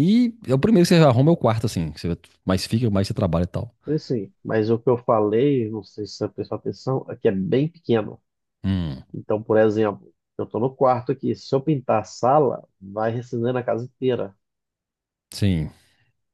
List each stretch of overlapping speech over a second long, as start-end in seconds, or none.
none